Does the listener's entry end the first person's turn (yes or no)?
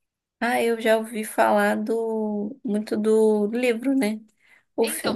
yes